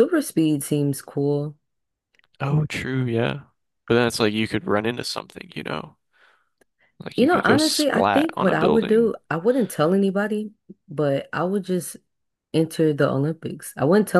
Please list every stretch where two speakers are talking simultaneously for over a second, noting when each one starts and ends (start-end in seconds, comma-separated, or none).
7.2-9.2